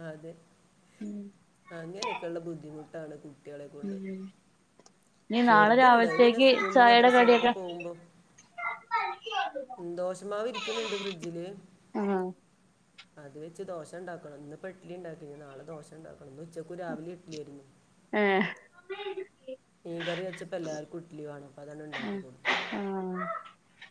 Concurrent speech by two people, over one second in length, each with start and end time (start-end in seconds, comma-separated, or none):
5.5-7.5